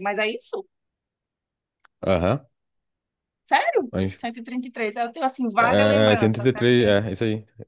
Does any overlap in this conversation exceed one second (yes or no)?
yes